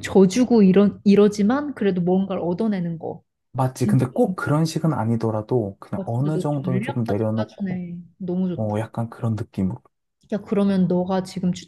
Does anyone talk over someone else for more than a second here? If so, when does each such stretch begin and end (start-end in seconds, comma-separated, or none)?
6.0-7.8